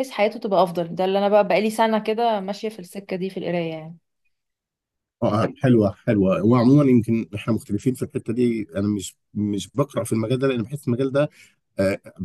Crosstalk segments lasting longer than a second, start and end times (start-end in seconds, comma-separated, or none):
none